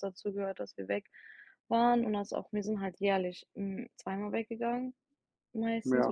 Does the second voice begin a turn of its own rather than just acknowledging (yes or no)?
no